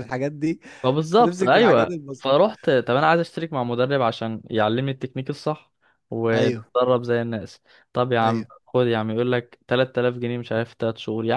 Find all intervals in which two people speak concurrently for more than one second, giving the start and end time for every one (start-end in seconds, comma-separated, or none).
1.2-2.4